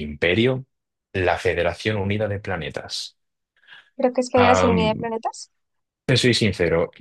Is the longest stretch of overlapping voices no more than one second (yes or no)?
yes